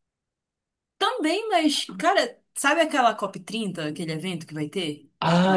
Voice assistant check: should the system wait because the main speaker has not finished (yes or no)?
no